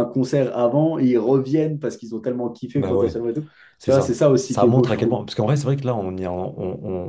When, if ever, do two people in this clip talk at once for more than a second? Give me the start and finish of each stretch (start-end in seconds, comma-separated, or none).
3.8-5.2